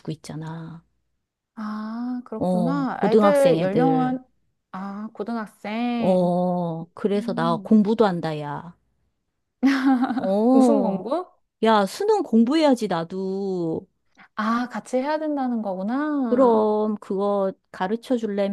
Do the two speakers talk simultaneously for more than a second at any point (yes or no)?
yes